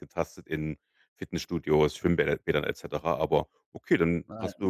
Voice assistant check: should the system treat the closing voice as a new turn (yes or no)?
no